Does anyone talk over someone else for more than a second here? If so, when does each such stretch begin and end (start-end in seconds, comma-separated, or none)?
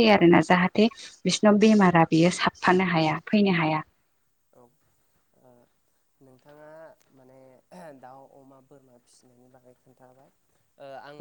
none